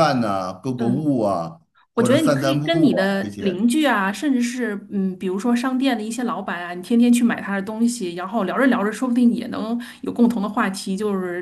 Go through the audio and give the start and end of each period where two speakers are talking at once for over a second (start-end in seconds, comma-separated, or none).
2.0-3.6